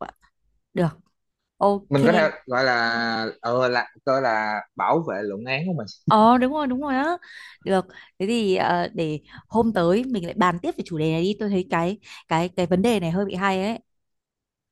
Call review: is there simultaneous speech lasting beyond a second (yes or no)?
no